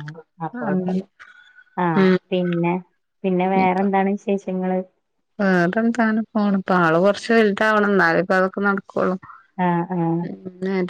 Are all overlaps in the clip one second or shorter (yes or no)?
yes